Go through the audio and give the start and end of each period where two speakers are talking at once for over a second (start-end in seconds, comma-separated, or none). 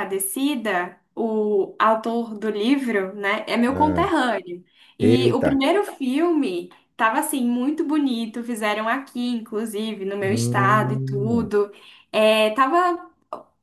10.2-11.5